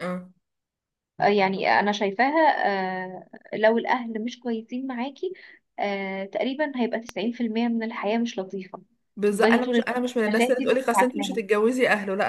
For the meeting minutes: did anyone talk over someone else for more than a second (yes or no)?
yes